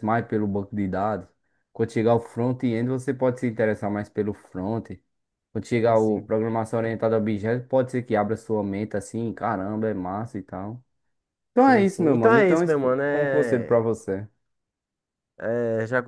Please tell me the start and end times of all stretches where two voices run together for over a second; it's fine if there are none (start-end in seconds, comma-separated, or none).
11.6-13.8